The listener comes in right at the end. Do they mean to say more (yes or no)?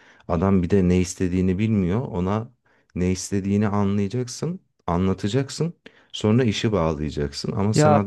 no